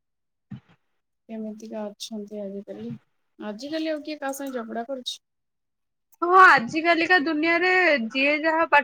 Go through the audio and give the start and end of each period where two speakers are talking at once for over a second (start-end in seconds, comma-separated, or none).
none